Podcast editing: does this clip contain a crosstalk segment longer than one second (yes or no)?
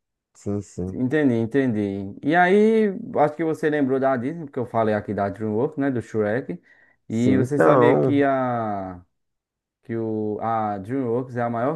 yes